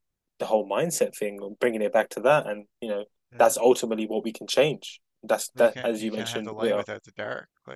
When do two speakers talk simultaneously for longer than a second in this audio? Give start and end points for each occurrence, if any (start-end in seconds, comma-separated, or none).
5.5-6.9